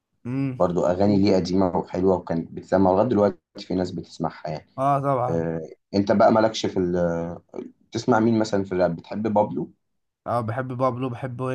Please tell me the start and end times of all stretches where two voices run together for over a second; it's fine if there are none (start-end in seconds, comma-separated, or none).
none